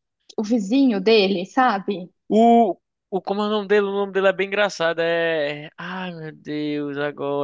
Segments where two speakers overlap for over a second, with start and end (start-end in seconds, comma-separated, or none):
none